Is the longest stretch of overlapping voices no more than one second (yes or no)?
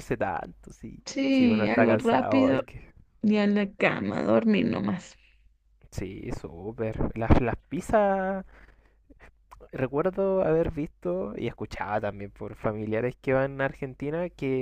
no